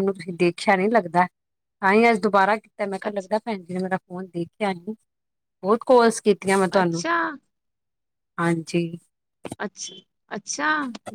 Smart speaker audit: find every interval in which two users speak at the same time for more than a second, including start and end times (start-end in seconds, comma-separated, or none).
none